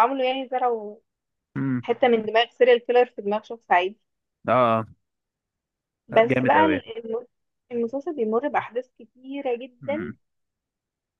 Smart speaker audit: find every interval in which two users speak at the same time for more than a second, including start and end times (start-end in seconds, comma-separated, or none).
none